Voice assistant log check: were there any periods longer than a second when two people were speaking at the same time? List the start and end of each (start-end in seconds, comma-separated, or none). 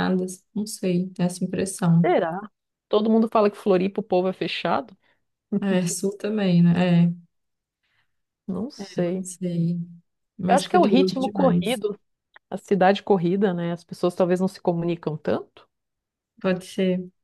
10.5-11.8